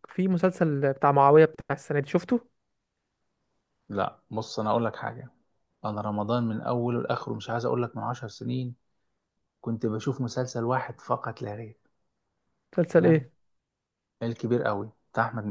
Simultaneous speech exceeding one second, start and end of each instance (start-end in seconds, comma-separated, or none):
none